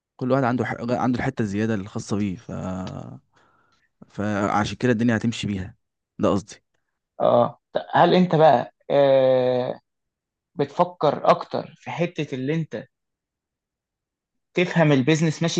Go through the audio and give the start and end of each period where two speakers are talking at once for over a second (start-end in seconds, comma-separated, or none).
none